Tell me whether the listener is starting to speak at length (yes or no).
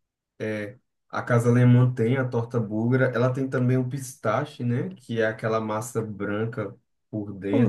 yes